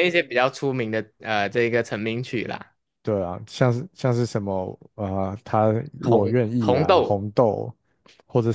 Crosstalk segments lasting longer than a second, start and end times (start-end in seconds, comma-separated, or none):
6.0-7.3